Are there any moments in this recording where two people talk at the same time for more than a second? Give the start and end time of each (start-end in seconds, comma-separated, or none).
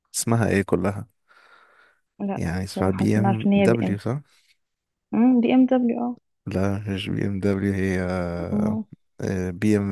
2.3-4.0